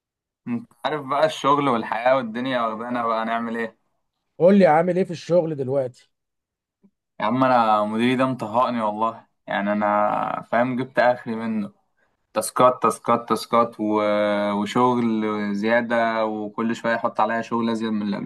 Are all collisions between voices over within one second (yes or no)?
yes